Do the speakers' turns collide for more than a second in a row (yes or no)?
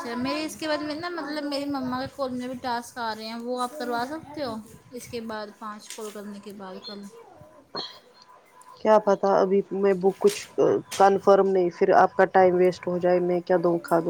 no